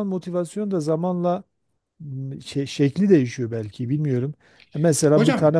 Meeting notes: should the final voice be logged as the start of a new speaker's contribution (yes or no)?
no